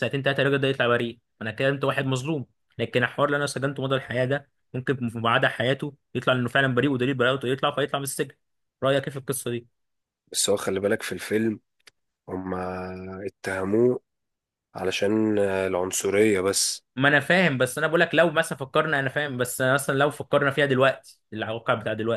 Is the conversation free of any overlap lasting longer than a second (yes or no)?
yes